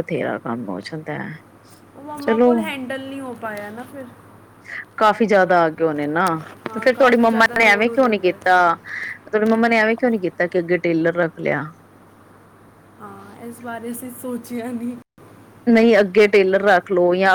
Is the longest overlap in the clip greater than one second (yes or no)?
yes